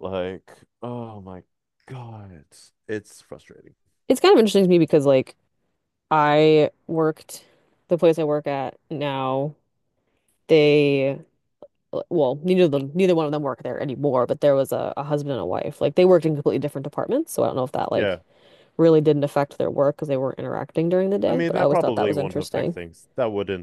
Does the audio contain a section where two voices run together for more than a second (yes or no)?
yes